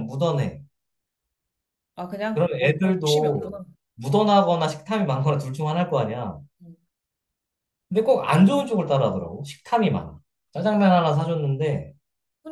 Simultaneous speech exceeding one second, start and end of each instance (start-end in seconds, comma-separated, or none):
2.3-3.6